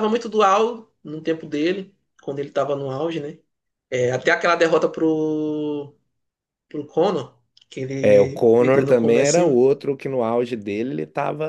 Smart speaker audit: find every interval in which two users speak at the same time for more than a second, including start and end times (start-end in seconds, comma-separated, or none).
8.0-9.6